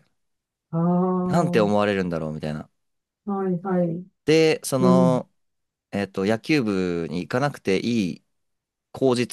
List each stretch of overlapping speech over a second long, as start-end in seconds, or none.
none